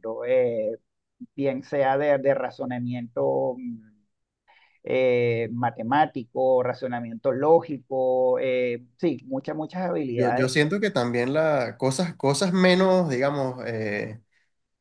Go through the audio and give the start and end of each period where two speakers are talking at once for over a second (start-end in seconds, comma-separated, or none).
none